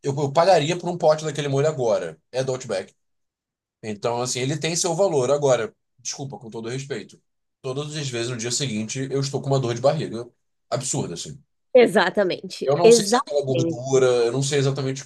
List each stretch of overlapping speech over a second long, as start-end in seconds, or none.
12.6-13.8